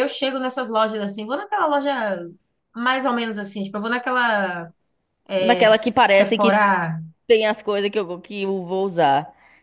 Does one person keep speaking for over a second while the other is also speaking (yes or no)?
yes